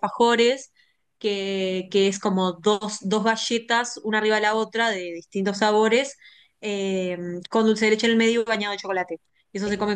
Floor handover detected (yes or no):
no